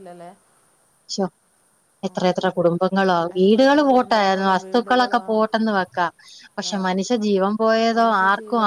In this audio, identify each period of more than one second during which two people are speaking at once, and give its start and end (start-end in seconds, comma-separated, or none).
3.4-5.3